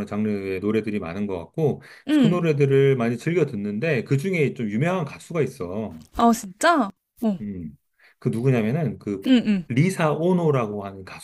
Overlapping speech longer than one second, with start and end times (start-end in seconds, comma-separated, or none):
none